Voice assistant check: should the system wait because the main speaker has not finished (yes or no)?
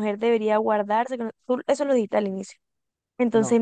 yes